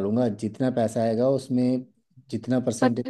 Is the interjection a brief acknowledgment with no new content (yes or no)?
no